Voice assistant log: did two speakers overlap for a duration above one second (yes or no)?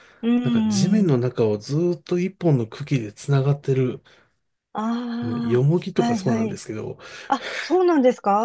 yes